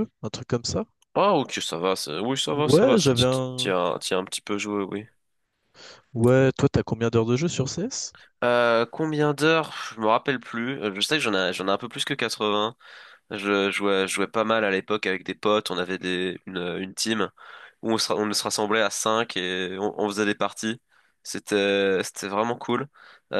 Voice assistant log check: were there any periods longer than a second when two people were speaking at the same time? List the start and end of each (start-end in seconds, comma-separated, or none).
2.5-3.7